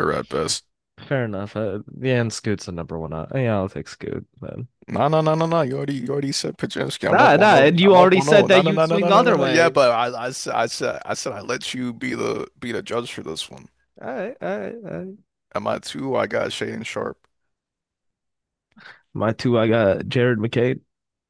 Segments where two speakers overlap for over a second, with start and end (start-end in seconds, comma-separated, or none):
7.1-9.7